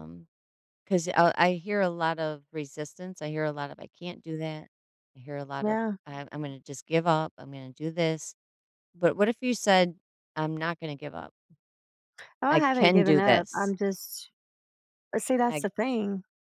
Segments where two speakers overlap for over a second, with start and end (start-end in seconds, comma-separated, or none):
12.5-13.7